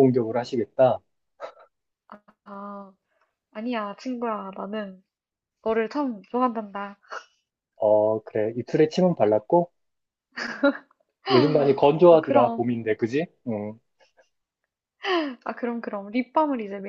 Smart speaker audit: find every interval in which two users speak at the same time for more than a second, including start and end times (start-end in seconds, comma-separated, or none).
none